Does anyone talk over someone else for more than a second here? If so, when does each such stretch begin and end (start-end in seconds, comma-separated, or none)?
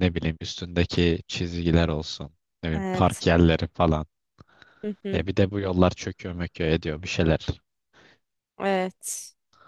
none